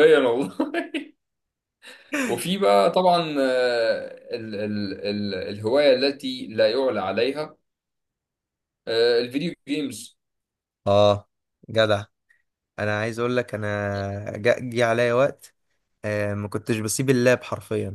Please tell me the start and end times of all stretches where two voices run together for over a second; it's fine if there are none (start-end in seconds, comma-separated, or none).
none